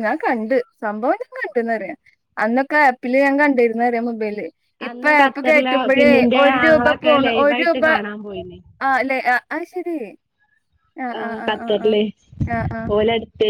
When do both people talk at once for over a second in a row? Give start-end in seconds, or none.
4.9-7.8